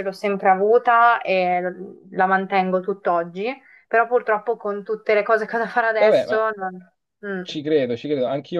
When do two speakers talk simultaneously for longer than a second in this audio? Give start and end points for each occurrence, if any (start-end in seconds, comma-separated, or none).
none